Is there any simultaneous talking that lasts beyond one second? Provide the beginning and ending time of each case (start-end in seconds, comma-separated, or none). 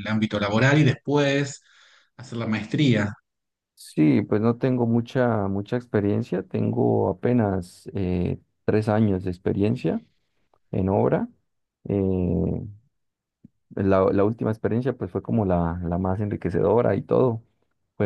none